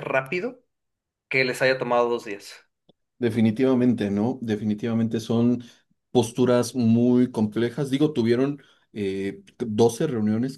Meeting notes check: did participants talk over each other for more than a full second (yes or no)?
no